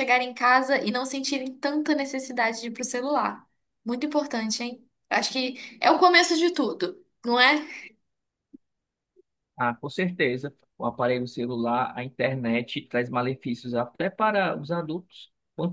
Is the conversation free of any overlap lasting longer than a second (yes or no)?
yes